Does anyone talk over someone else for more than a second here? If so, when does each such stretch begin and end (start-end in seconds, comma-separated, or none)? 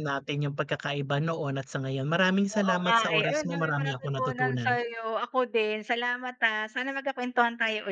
2.5-4.8